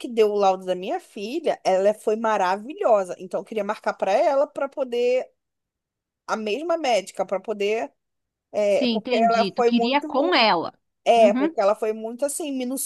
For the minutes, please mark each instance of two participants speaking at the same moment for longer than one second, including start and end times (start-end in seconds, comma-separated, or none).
8.7-10.1